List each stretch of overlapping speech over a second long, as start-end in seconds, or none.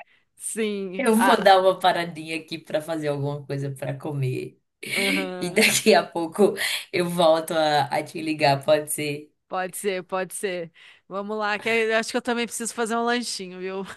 none